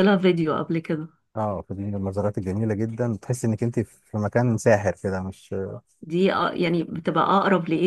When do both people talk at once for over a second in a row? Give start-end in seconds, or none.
none